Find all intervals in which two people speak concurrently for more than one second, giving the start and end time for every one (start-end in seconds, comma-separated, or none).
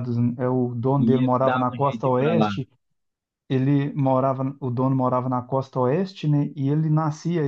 1.0-2.5